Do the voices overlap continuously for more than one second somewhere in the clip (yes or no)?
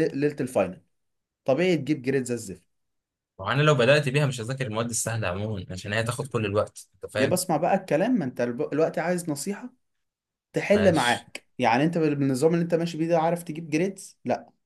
no